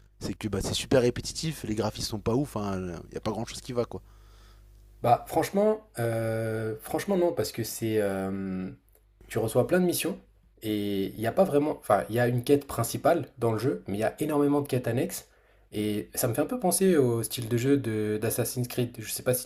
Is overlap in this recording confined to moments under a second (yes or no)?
yes